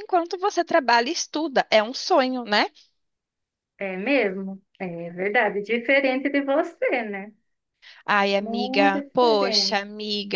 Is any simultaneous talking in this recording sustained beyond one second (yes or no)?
yes